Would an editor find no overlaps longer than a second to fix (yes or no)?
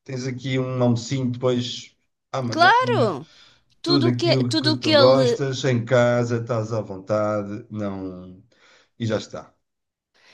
no